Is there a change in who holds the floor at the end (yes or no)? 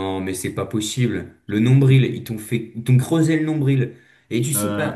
no